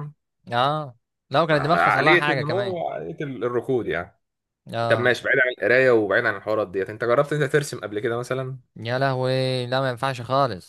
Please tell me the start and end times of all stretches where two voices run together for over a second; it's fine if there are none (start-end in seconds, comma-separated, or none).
1.5-2.8